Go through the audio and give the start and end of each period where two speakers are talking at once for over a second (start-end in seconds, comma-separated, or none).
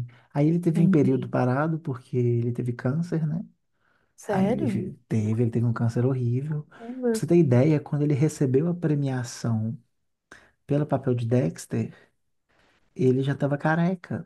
none